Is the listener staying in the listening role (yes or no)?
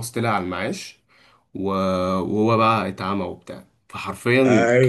no